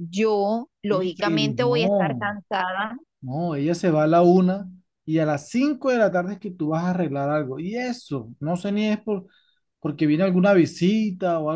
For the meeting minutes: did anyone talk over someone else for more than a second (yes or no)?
yes